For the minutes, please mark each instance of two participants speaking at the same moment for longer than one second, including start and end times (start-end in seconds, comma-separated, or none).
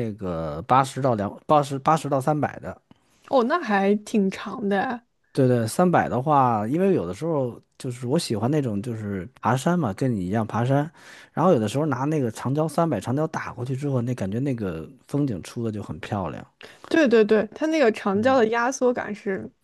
none